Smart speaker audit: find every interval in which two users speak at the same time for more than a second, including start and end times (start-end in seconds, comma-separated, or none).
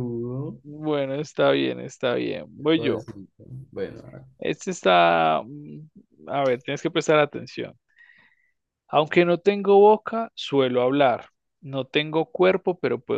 none